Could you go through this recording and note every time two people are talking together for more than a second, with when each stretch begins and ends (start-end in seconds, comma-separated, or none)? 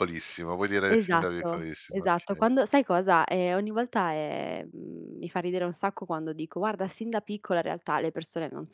0.9-2.5